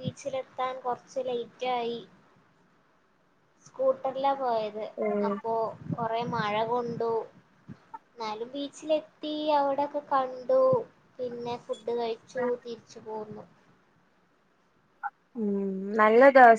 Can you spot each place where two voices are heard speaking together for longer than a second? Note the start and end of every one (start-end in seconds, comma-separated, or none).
none